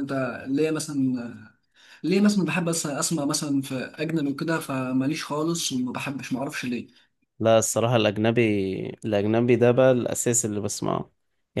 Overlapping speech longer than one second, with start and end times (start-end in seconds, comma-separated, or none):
none